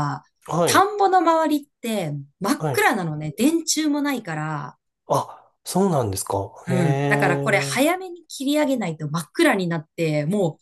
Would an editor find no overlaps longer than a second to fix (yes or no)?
no